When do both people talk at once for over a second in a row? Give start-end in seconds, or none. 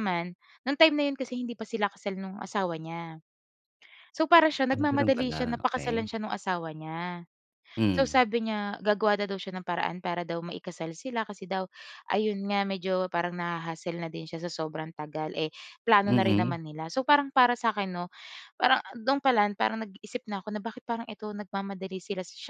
4.7-6.1